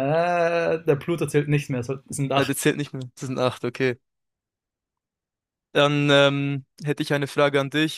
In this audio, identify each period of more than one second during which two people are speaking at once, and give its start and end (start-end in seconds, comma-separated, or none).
none